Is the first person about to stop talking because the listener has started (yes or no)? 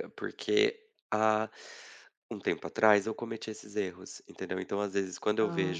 no